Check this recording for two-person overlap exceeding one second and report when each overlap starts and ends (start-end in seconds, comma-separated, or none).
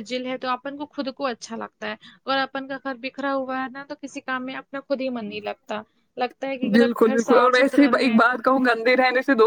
6.8-8.2